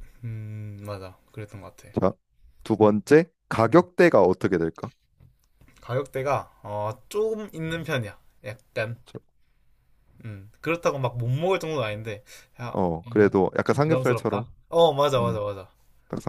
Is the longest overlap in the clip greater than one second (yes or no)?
yes